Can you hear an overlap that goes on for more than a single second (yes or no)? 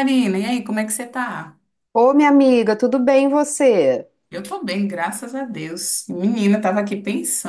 no